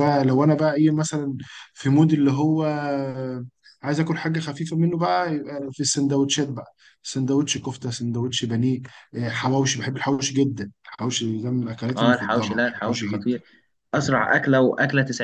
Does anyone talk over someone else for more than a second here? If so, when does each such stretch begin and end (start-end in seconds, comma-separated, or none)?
12.0-13.4